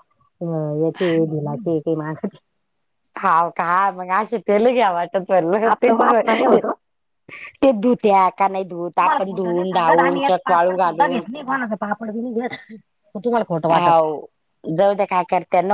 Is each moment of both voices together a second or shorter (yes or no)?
no